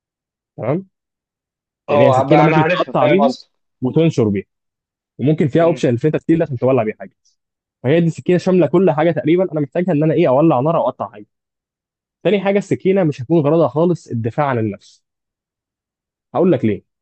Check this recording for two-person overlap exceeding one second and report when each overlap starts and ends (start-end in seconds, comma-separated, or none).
1.9-3.3